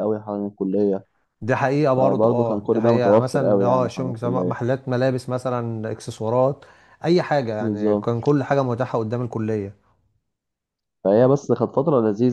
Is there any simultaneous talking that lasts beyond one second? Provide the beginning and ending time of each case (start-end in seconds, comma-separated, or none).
2.0-4.6